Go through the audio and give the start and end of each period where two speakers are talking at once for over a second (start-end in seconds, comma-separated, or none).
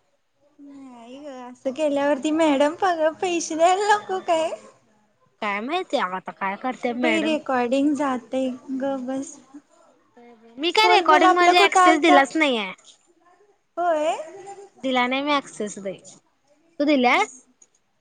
10.8-12.2